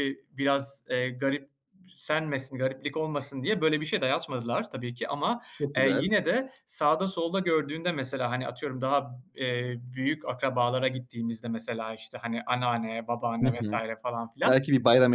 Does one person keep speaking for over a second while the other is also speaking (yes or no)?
no